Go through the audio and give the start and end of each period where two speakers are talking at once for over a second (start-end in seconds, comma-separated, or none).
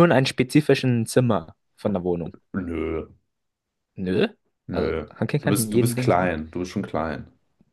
4.7-6.3